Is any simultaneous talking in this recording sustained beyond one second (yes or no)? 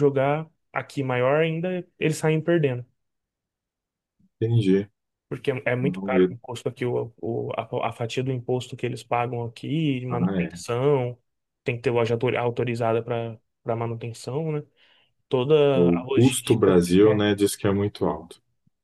yes